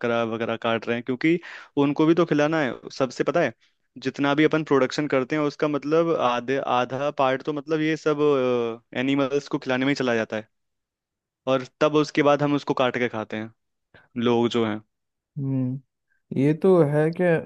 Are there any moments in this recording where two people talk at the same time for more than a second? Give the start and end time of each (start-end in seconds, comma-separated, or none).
none